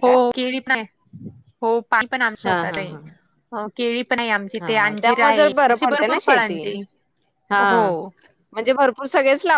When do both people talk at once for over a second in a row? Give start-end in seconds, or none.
4.6-6.6